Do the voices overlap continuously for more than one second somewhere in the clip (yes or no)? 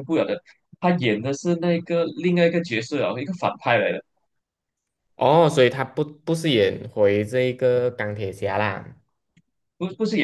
no